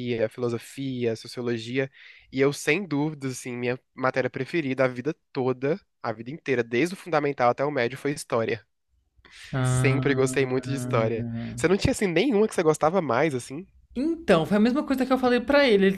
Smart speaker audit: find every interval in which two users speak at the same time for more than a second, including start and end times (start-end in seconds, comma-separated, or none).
9.6-11.0